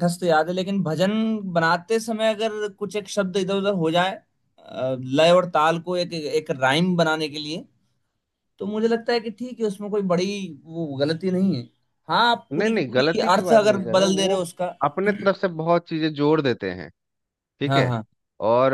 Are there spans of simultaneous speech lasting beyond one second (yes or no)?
yes